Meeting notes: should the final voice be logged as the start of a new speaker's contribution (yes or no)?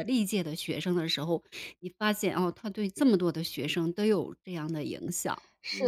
yes